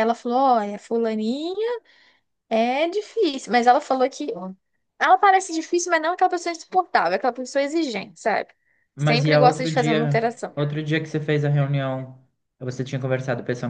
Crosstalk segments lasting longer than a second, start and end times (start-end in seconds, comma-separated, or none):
9.0-10.5